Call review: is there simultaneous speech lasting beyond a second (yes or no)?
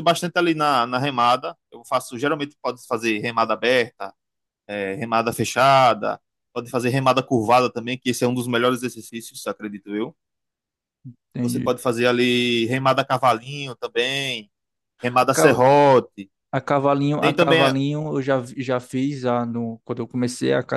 no